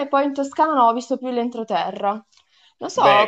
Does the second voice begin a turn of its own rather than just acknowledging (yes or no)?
yes